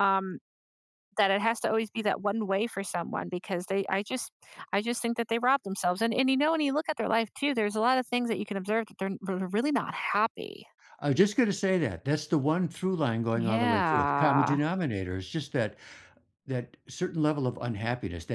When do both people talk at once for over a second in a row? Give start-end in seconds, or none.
13.3-14.6